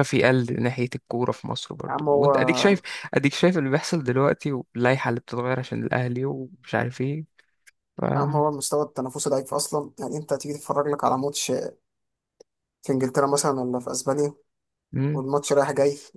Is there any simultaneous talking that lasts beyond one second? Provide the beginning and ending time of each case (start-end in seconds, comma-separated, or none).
none